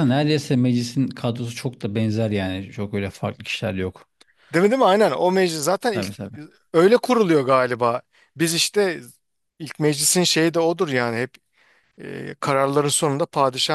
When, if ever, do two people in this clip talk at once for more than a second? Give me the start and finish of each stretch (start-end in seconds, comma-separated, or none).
none